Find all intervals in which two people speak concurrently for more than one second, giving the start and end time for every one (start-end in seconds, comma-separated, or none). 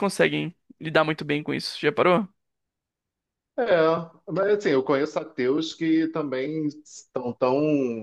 none